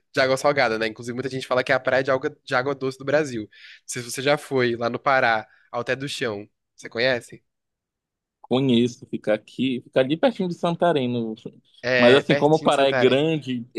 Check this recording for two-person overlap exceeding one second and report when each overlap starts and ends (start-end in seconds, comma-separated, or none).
12.0-13.2